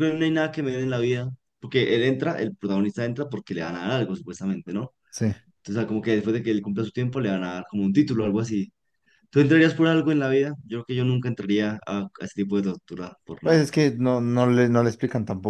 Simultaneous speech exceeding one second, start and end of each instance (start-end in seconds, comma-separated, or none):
none